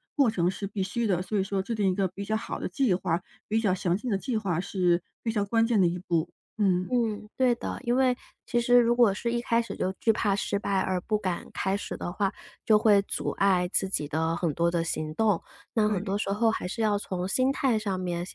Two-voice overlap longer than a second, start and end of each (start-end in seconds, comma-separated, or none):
none